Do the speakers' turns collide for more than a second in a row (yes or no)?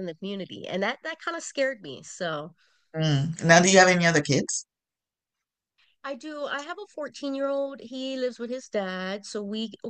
no